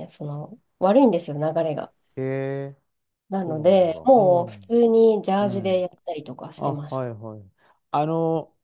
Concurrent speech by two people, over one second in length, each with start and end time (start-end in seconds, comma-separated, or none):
3.4-4.7